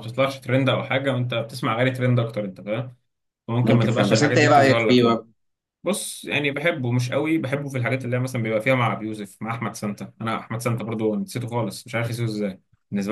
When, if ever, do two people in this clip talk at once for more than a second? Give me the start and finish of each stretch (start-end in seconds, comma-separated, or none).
3.6-5.2